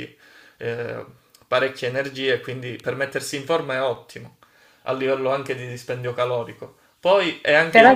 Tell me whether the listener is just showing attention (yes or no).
yes